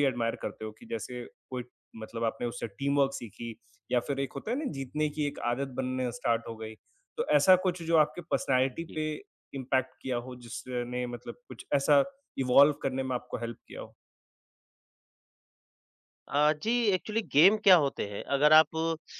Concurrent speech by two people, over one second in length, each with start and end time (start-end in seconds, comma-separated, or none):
none